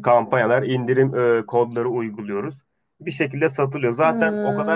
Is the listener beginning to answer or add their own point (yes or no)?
no